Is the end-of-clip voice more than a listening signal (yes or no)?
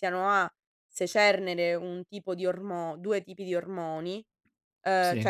no